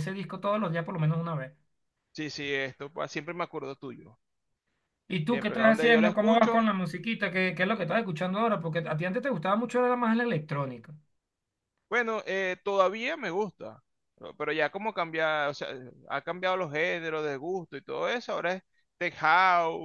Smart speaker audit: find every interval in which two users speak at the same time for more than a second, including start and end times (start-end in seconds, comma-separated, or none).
5.3-6.7